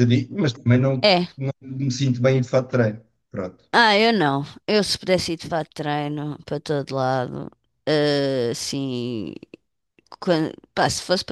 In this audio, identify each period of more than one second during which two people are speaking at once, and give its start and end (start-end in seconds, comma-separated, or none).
none